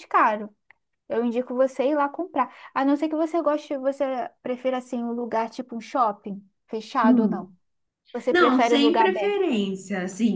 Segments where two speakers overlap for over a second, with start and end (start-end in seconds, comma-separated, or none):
8.3-9.6